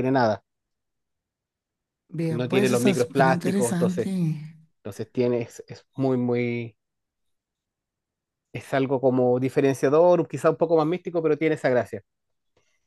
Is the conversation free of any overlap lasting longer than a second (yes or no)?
no